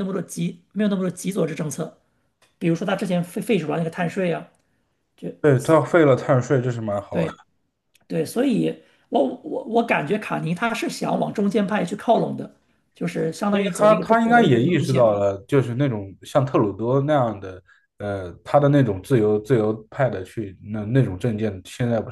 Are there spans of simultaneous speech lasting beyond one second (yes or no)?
yes